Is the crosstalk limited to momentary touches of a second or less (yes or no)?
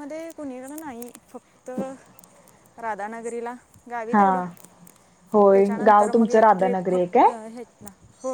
no